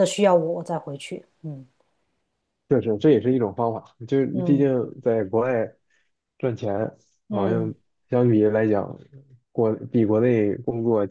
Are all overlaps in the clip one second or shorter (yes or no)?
yes